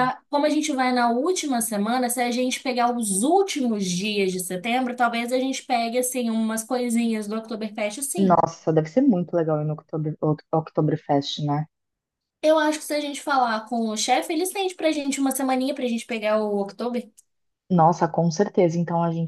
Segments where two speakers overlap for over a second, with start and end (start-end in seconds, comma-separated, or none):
none